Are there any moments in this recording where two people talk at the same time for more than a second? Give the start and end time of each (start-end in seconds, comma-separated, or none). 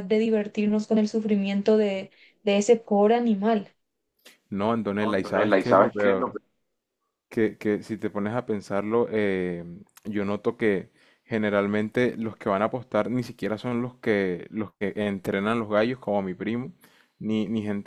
5.0-6.3